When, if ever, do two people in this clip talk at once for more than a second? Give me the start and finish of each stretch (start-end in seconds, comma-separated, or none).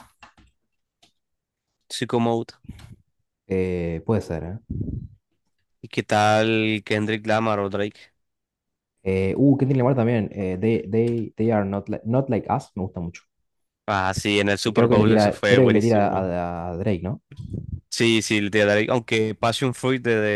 14.6-16.3